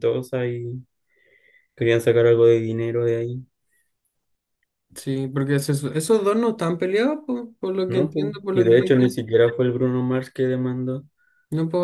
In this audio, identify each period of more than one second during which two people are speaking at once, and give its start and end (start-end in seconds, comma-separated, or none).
7.9-9.2